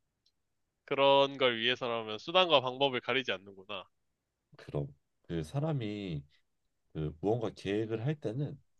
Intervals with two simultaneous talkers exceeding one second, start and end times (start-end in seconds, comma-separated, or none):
none